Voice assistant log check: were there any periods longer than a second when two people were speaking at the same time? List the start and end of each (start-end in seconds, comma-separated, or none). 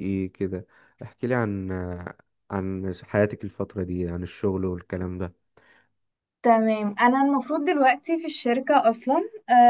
none